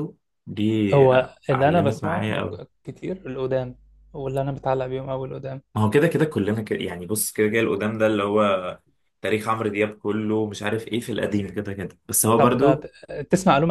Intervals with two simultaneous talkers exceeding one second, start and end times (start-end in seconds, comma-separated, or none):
0.9-2.2